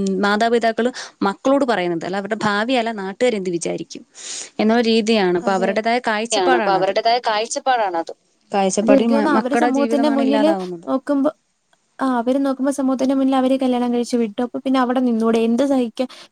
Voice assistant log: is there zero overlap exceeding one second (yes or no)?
no